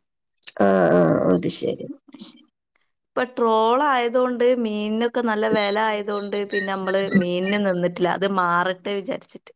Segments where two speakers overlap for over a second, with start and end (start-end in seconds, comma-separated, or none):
5.6-7.5